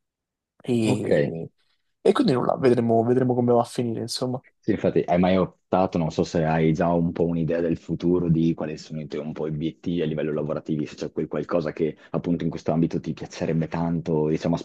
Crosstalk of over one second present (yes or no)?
no